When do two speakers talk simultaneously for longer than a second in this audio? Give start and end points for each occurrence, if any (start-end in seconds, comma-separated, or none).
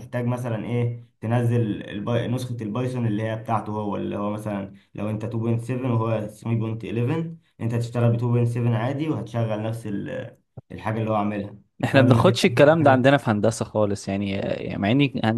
11.8-13.1